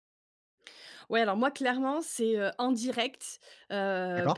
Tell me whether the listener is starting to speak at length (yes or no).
no